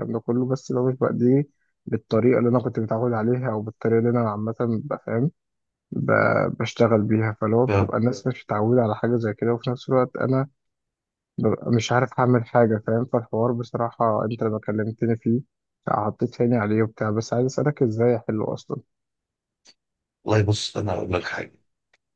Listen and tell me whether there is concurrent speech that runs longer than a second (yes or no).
no